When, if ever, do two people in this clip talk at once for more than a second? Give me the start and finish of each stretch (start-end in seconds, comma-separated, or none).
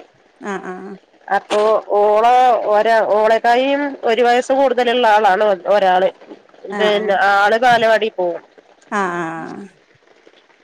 none